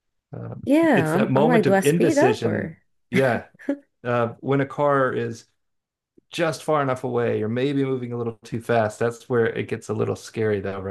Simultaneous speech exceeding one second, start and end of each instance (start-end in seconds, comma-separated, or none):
0.9-2.8